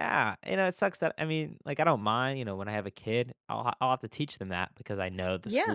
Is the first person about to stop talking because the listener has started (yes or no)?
no